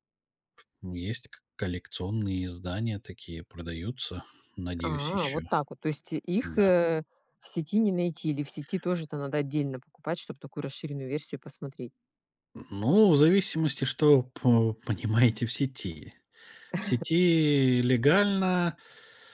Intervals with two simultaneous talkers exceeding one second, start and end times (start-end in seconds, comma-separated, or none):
none